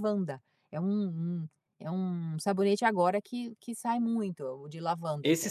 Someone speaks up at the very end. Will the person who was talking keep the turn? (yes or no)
no